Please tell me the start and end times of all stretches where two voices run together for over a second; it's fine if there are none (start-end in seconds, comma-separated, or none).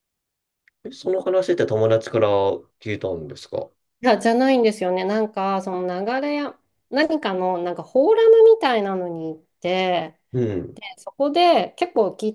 none